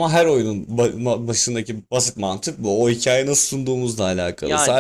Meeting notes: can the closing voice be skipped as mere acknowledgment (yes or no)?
yes